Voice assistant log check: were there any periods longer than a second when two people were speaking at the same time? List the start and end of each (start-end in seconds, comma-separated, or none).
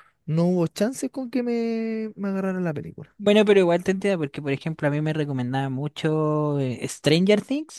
none